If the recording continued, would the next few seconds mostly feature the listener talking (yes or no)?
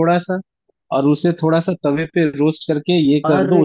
no